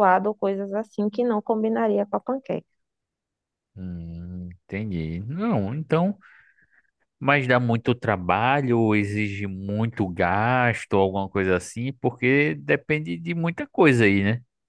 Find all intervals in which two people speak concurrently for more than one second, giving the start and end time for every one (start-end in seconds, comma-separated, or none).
none